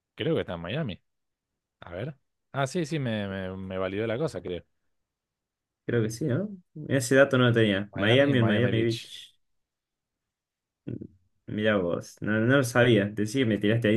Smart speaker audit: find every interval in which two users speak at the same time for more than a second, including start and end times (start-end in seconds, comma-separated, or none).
7.9-9.1